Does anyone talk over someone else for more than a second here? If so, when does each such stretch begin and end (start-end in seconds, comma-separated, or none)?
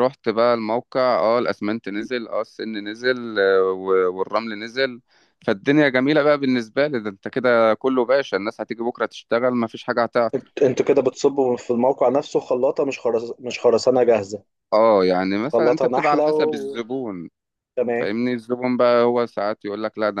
15.4-16.8